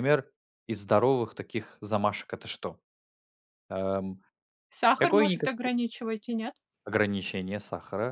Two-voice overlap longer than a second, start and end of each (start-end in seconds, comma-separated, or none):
none